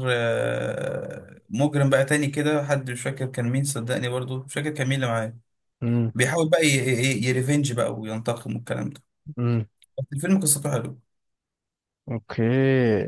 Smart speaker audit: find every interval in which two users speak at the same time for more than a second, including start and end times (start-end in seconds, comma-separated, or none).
none